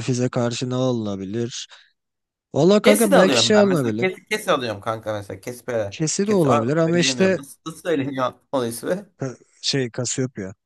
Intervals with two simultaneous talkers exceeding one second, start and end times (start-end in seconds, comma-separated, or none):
2.8-4.2, 5.9-7.4